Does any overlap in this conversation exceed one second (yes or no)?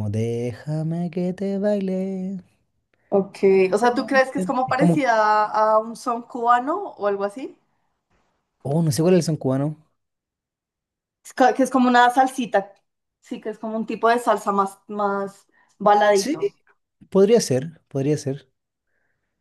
yes